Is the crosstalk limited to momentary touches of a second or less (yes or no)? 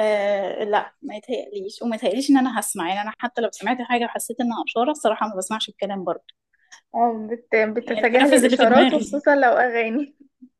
no